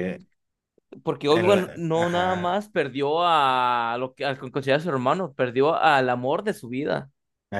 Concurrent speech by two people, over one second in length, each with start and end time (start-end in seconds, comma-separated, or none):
1.3-2.6